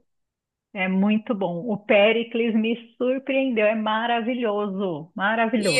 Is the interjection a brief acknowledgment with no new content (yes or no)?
no